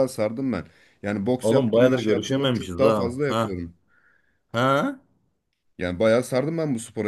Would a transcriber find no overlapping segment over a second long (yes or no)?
no